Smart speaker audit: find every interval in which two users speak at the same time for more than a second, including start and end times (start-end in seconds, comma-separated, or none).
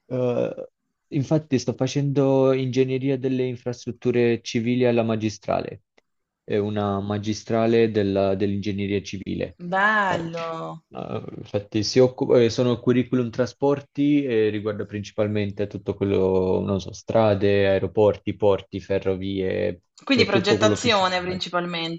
20.0-21.4